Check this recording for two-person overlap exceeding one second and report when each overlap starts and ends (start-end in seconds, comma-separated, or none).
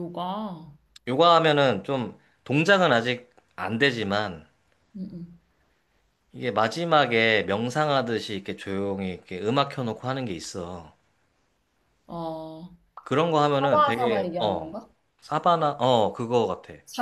13.6-14.8